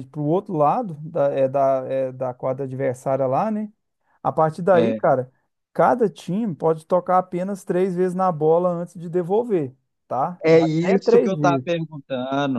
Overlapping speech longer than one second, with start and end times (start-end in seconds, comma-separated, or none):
10.4-11.7